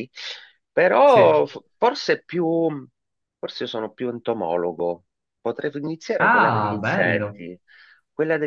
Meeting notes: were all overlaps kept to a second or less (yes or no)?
no